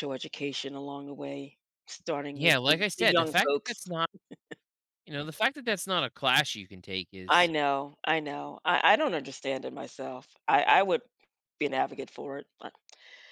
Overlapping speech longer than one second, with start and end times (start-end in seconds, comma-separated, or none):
2.3-3.8